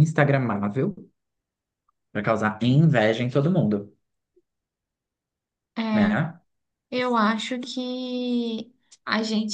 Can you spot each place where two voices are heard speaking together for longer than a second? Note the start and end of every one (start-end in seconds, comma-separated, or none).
none